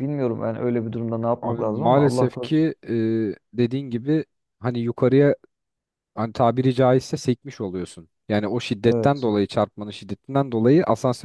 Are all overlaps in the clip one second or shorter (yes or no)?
no